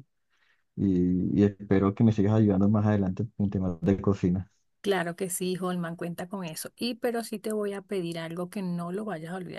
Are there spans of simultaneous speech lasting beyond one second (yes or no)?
no